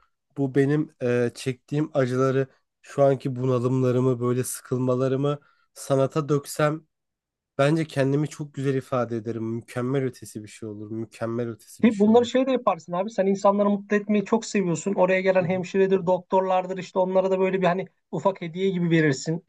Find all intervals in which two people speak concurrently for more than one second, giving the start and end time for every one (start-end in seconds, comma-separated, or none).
none